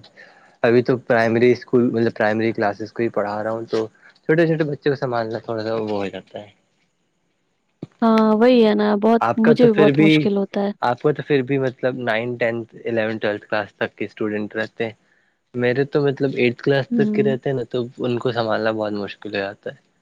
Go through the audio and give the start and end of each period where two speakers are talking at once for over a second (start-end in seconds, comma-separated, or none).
none